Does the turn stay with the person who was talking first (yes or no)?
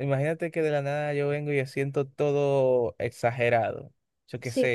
yes